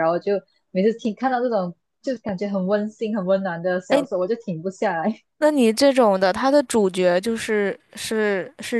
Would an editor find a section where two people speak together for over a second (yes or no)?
no